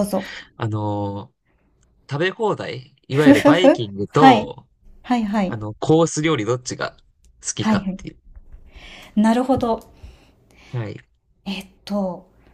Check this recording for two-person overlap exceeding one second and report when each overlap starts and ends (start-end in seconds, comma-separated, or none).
3.1-4.5